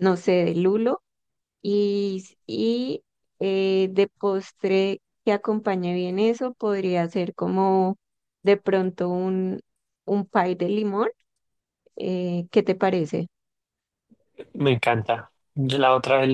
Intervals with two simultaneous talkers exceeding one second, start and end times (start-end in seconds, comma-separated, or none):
none